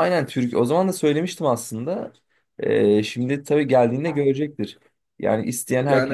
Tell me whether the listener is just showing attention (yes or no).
yes